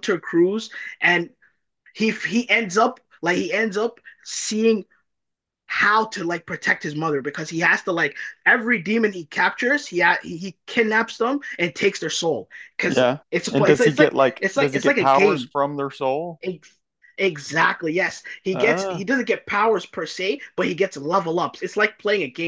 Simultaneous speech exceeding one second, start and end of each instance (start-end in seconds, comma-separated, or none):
12.9-15.5